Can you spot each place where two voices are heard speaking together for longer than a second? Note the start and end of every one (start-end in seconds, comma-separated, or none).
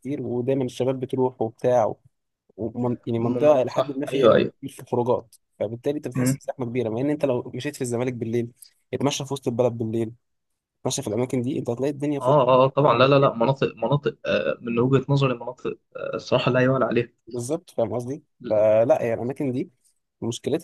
3.2-4.5